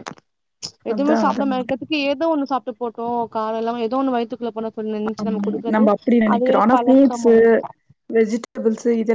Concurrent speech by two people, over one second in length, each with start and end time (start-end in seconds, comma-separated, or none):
none